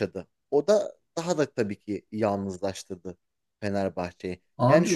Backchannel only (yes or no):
yes